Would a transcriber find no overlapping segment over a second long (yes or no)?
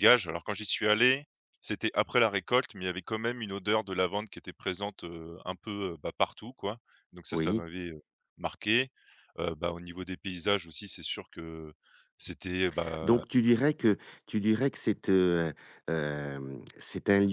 yes